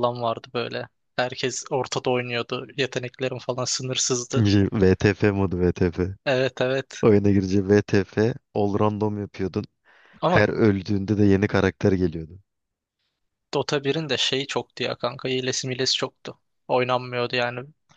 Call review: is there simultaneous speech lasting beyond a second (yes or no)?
no